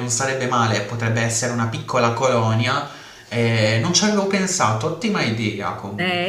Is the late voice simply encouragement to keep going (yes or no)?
no